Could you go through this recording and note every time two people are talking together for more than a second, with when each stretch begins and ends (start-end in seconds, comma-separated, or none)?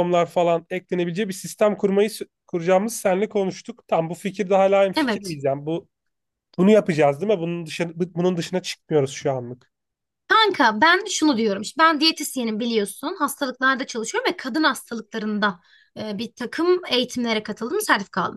none